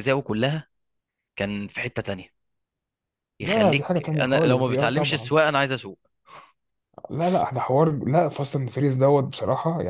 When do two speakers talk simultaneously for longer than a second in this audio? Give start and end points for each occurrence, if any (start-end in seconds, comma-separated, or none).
3.4-5.3